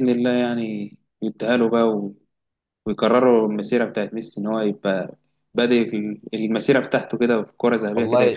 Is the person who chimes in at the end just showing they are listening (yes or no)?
no